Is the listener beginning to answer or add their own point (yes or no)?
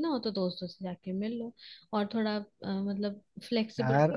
no